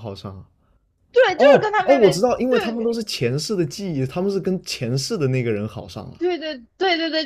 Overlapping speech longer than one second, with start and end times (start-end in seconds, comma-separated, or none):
1.4-3.0